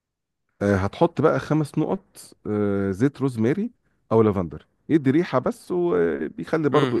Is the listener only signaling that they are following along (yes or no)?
no